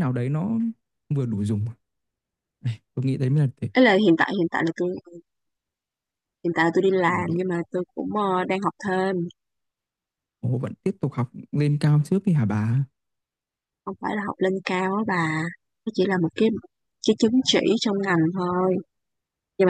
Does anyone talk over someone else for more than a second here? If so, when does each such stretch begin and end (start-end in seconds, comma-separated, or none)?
none